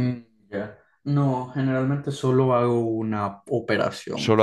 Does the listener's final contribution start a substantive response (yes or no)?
yes